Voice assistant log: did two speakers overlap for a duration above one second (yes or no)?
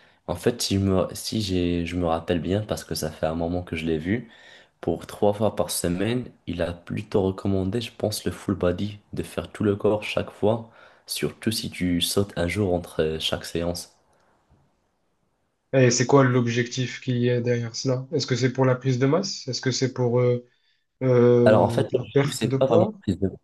yes